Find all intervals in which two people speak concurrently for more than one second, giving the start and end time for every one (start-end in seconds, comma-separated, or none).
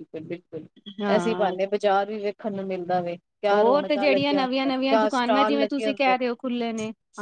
3.5-6.7